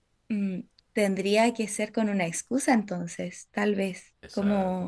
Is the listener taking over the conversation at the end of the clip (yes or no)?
yes